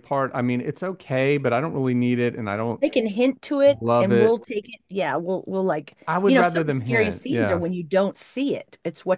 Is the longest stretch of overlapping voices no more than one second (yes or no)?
no